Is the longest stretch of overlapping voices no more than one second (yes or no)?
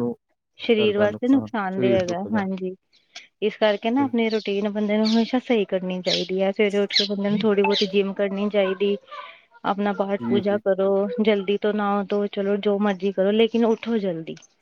no